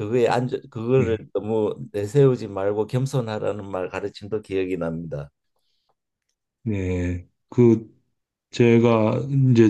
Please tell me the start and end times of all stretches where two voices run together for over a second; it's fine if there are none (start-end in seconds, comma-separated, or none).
none